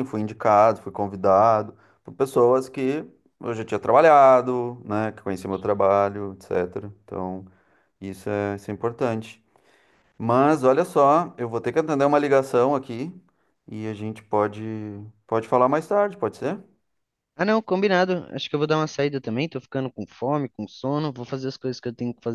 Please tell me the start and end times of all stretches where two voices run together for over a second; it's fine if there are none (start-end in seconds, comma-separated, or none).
none